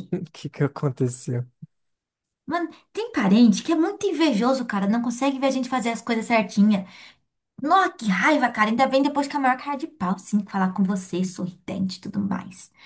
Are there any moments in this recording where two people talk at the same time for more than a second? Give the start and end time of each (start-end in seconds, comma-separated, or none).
none